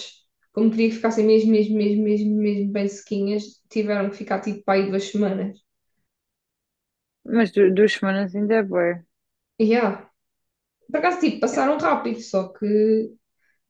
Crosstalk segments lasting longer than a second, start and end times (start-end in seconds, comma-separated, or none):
none